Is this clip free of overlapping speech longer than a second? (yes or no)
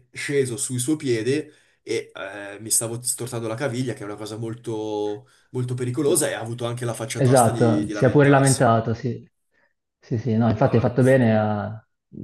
no